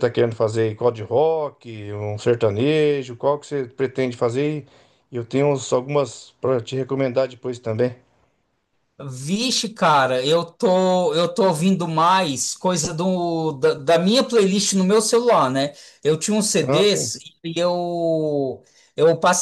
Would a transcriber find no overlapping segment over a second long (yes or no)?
yes